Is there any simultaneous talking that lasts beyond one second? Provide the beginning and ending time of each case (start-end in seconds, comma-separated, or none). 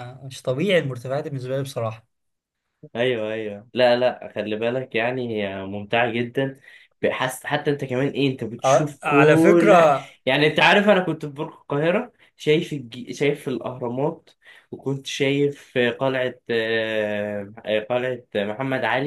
8.7-10.1